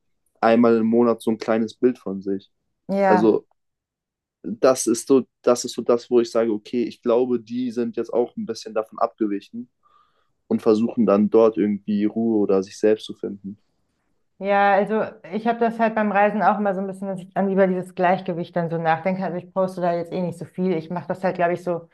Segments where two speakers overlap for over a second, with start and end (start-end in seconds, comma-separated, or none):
none